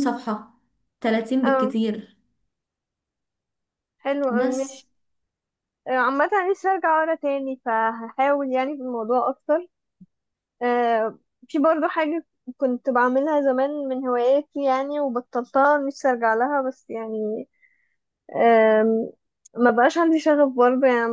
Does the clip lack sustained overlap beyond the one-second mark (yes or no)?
yes